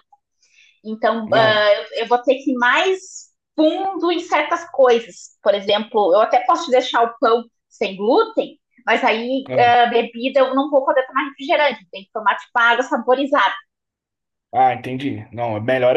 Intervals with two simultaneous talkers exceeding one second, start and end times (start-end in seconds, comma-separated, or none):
none